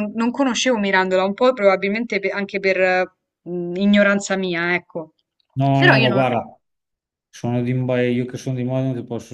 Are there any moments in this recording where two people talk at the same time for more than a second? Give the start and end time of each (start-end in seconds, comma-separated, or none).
none